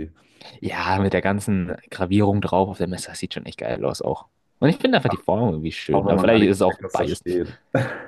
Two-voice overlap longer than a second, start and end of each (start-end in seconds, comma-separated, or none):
5.9-7.4